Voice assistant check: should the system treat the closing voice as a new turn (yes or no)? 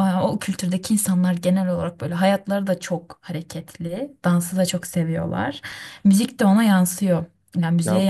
no